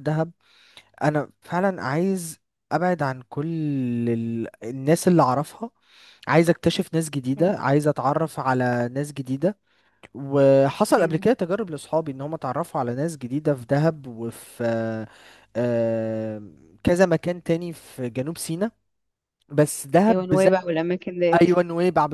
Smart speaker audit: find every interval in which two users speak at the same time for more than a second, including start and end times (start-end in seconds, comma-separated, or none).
none